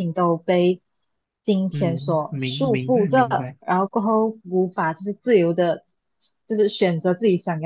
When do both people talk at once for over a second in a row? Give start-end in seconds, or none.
1.7-3.6